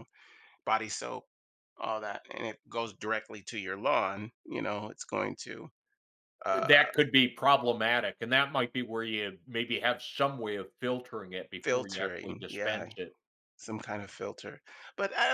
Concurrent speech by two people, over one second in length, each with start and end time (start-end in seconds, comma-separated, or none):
11.6-12.9